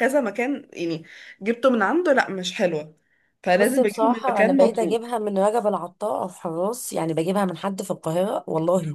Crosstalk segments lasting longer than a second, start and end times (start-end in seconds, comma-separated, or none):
3.5-5.0